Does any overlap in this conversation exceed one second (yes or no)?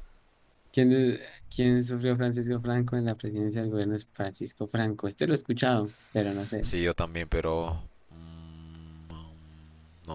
no